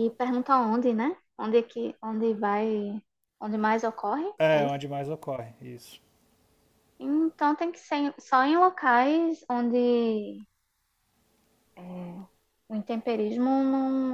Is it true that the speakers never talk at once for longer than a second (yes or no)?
yes